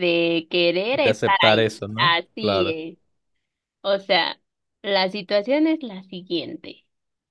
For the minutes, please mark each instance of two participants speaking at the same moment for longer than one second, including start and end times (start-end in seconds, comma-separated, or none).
0.9-2.8